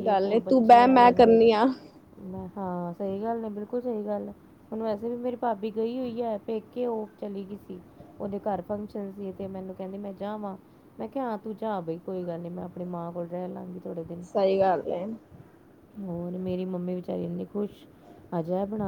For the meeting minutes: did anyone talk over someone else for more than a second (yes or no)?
no